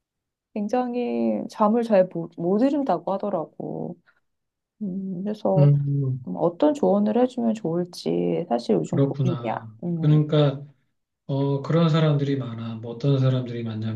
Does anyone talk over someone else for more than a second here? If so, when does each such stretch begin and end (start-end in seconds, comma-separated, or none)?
8.8-10.2